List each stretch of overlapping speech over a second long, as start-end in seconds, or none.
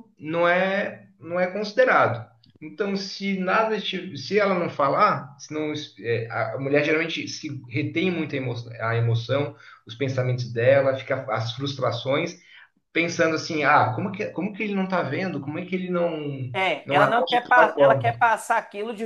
16.8-18.2